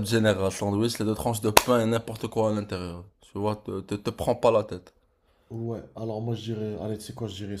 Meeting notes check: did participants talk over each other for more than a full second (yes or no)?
no